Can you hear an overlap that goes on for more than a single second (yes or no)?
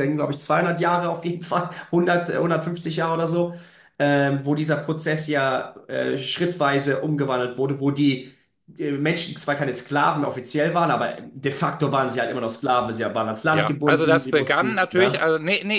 yes